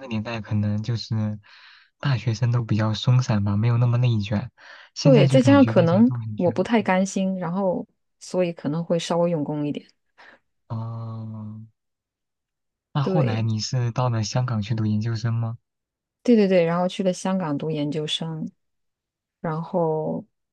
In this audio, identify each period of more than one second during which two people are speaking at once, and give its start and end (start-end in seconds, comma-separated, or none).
5.0-6.7